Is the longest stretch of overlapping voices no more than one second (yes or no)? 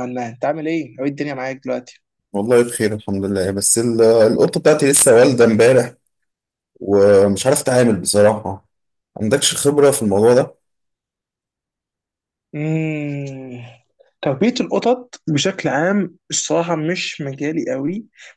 yes